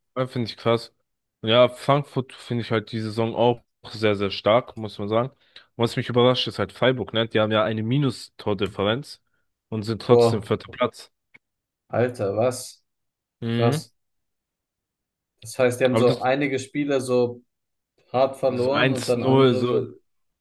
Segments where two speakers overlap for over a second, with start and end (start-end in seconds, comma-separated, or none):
18.5-19.9